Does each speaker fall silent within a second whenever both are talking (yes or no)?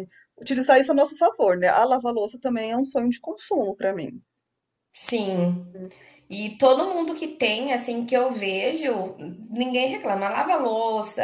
yes